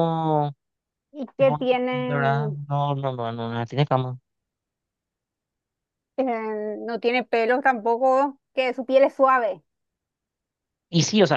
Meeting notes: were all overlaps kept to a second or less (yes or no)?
no